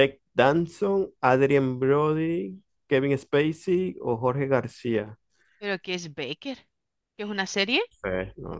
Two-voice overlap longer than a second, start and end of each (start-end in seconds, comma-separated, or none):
none